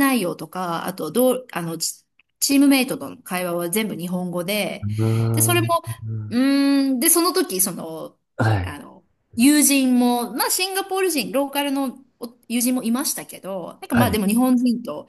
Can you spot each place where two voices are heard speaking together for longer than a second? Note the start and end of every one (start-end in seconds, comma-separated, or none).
none